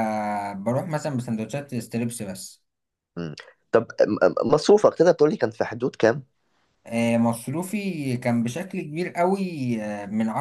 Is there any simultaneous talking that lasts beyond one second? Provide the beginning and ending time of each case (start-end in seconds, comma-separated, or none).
none